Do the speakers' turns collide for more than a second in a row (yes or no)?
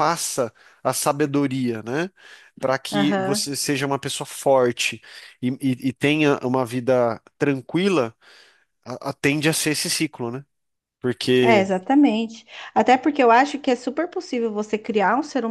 no